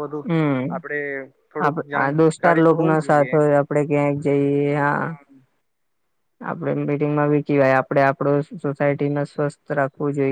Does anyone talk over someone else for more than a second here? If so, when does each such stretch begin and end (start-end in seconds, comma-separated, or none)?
1.6-3.3